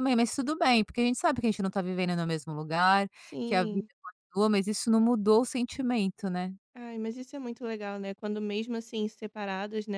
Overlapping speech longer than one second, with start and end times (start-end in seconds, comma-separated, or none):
none